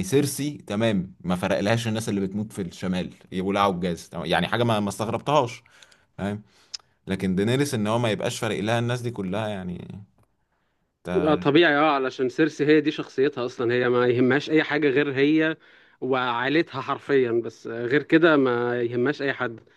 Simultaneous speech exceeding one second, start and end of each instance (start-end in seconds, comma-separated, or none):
none